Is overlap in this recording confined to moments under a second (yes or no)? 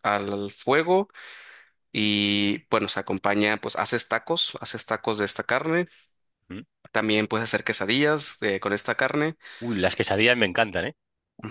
yes